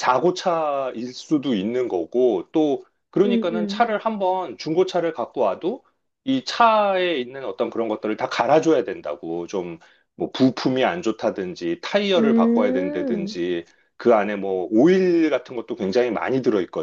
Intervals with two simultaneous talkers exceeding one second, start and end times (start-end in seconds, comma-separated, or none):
12.1-13.4